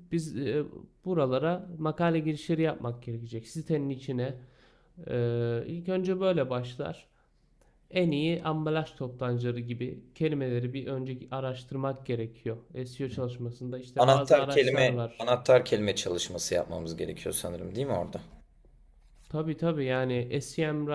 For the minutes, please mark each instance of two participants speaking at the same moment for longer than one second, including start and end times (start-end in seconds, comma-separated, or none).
14.0-15.3